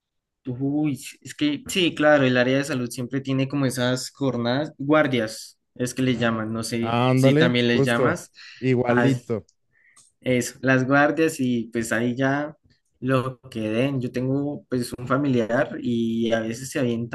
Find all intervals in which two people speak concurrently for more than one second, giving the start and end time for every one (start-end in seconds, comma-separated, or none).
6.8-8.3